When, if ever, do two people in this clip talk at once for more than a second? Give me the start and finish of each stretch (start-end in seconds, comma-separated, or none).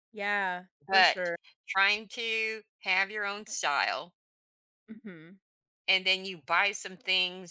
none